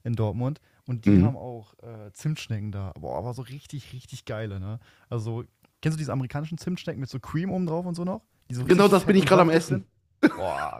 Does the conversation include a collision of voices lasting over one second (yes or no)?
yes